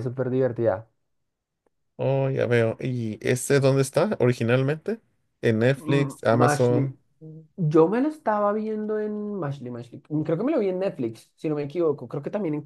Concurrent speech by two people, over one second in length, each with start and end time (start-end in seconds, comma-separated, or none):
5.8-7.0